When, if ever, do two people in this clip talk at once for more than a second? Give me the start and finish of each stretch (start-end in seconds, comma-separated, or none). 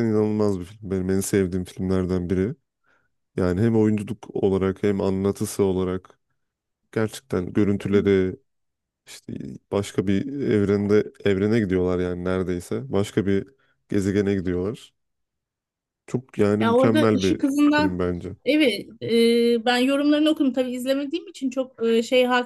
16.6-18.0